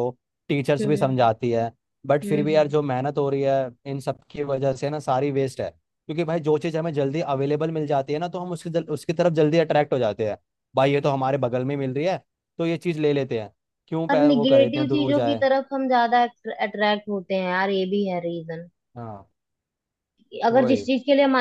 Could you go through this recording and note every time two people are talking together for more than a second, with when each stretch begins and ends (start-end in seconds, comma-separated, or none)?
14.1-15.4